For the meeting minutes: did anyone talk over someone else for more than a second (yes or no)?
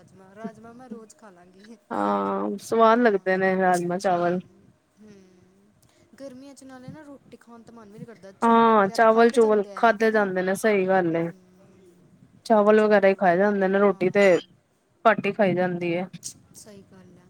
yes